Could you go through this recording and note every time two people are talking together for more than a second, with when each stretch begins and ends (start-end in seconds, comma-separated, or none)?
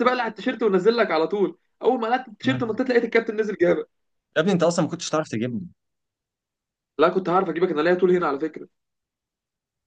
none